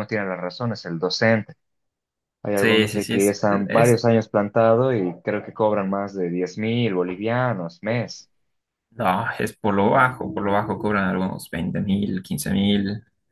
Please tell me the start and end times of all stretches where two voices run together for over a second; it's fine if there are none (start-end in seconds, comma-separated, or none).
2.5-4.0